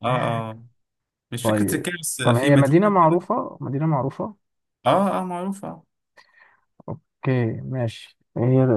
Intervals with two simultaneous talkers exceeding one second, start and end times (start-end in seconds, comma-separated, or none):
1.4-3.2